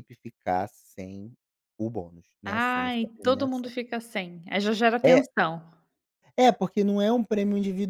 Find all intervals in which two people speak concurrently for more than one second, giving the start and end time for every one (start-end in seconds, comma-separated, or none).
2.4-3.7